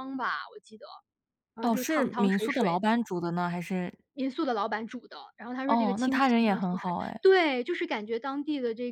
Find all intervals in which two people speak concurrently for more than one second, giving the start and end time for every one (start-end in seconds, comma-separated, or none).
1.6-2.9, 5.7-7.2